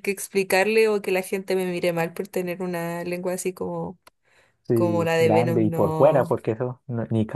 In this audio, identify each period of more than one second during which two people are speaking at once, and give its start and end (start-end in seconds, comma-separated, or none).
4.7-6.4